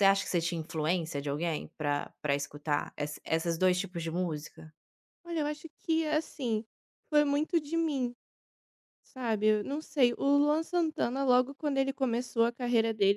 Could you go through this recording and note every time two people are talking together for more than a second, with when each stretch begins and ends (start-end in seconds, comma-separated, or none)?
none